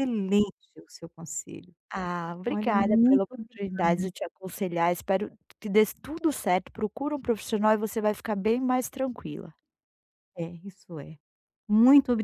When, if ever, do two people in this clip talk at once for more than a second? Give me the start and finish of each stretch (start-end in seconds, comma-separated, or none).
2.5-4.1